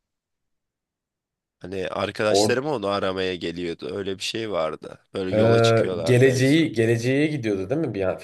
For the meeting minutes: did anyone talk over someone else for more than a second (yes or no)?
yes